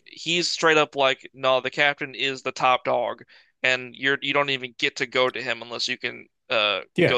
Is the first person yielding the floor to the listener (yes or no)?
yes